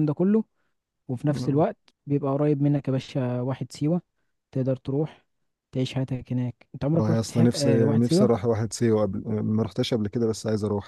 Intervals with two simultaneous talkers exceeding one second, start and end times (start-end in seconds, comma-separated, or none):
6.9-8.3